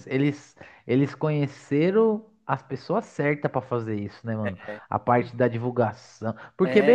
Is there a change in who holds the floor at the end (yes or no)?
yes